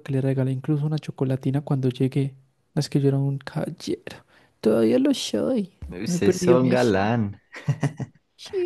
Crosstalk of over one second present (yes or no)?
yes